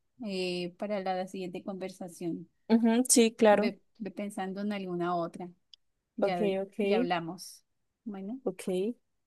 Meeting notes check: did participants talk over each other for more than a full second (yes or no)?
no